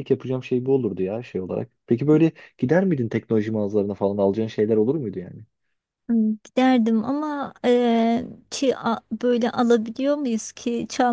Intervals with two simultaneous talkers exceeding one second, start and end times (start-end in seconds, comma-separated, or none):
none